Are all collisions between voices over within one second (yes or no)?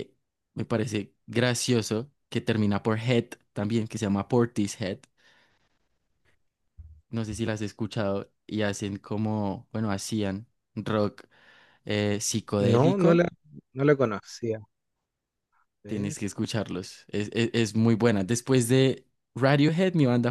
yes